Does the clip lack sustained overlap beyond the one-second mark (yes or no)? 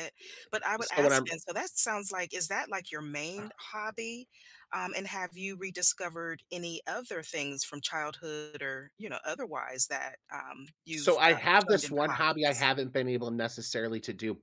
no